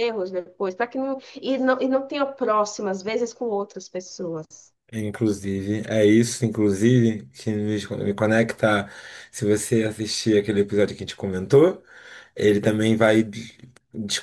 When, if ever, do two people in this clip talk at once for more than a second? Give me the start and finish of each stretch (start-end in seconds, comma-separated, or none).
none